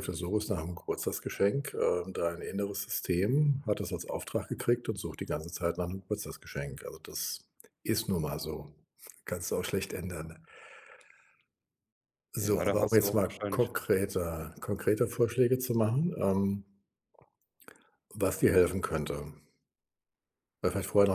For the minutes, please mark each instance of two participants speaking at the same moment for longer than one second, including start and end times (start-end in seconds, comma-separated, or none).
12.4-13.9